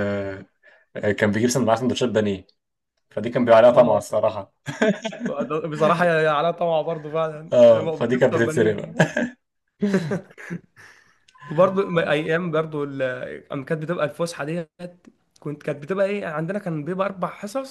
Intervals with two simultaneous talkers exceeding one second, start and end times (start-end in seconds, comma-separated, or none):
7.5-8.9